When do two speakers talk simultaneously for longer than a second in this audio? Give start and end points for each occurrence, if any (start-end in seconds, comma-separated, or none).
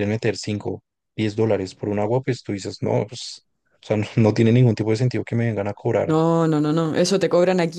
none